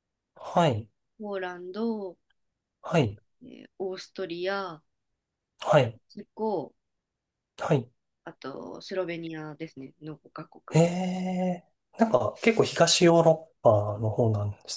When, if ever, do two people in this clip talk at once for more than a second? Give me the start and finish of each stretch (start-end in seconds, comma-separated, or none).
none